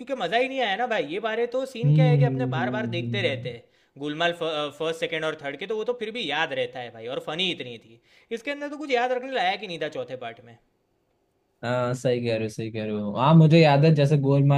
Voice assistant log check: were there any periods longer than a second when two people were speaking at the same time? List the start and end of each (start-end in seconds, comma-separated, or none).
1.8-3.5